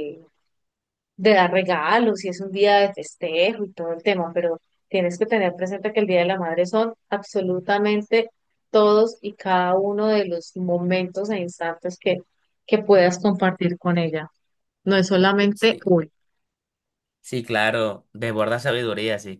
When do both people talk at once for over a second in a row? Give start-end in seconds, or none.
none